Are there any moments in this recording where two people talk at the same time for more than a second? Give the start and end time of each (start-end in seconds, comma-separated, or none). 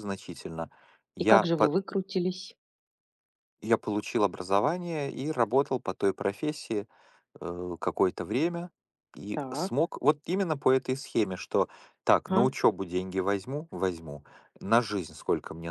none